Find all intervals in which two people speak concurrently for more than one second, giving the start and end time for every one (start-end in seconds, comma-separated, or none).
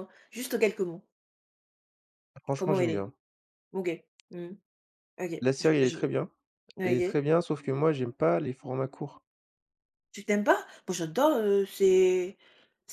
none